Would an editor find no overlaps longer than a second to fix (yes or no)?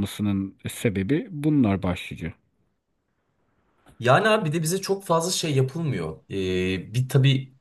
yes